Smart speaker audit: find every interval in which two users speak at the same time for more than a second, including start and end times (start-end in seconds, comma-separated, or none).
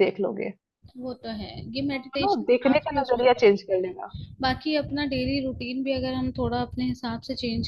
1.9-4.1